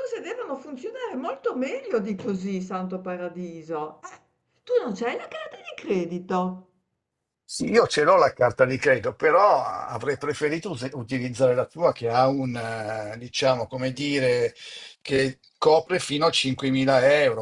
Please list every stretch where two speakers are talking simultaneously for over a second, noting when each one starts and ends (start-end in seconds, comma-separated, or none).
none